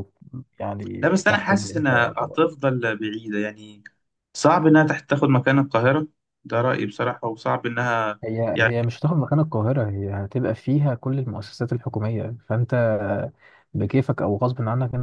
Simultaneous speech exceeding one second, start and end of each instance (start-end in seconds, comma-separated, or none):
1.0-2.4